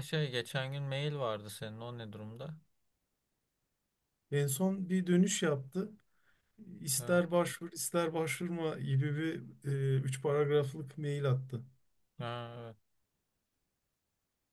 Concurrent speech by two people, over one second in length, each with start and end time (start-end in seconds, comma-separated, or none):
none